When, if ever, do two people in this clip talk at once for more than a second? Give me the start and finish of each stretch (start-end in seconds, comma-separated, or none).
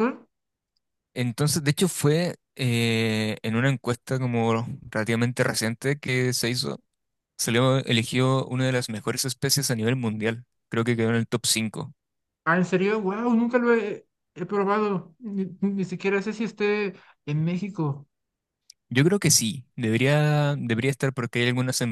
none